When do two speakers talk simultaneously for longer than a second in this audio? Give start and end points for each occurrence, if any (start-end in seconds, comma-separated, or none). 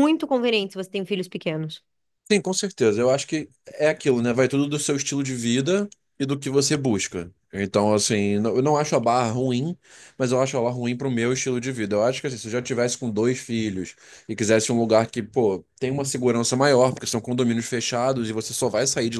none